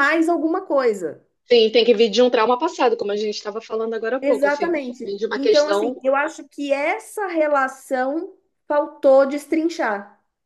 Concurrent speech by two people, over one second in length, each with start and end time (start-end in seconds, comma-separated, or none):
4.2-6.0